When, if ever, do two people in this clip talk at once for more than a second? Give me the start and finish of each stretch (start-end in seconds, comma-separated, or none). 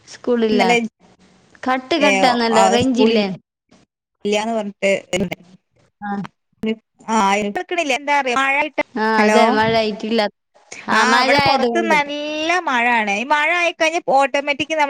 none